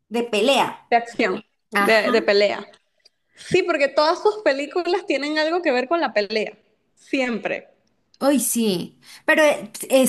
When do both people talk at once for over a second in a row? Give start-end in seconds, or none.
none